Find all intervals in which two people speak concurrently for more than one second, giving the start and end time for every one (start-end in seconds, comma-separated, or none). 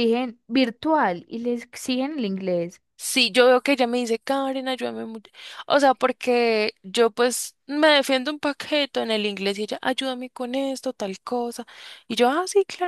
none